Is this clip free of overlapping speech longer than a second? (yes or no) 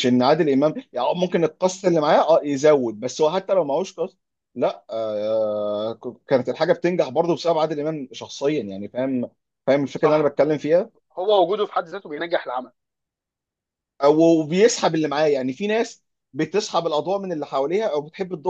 yes